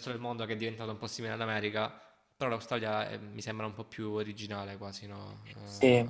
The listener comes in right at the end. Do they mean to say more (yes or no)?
yes